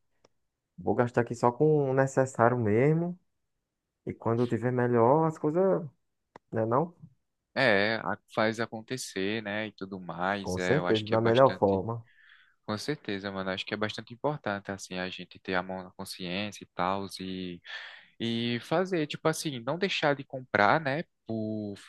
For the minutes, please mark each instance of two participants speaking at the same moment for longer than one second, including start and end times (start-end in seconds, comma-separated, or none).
10.4-11.8